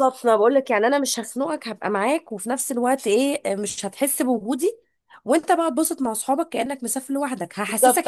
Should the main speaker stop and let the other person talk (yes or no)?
yes